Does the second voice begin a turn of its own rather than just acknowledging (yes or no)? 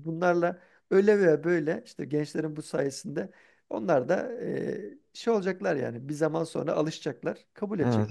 yes